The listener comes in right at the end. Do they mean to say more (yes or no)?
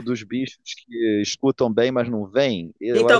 yes